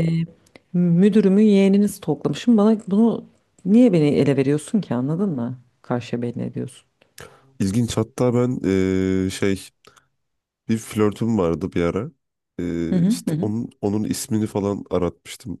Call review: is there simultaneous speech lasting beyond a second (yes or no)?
no